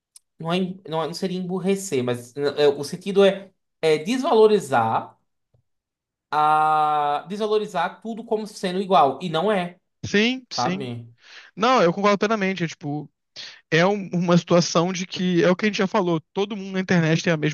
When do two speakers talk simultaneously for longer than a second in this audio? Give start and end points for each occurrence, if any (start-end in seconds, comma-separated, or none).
none